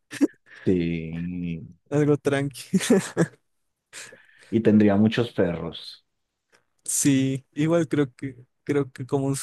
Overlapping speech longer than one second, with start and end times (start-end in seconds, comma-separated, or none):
none